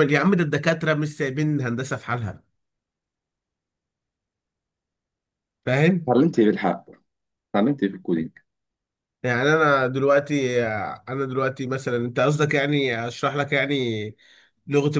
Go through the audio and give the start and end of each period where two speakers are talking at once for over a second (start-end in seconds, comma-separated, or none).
none